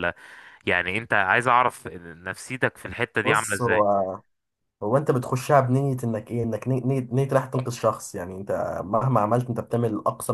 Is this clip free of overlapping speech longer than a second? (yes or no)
yes